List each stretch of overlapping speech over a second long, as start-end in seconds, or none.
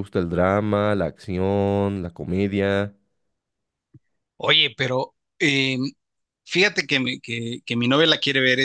none